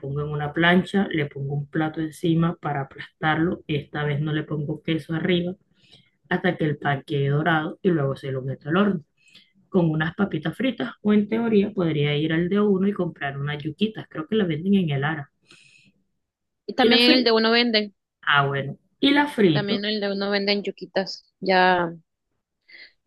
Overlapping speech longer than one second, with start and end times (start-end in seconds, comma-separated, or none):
none